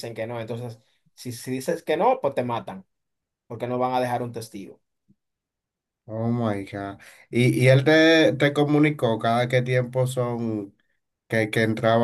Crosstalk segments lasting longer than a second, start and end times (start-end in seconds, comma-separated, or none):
none